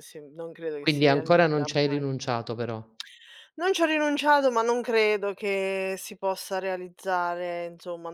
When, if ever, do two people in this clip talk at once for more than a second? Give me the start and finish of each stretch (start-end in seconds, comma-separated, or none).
0.8-2.0